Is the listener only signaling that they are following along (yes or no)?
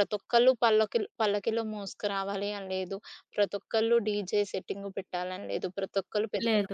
yes